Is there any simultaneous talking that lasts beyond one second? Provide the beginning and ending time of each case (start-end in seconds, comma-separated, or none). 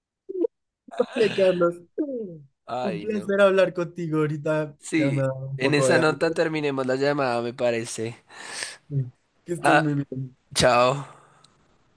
4.8-6.3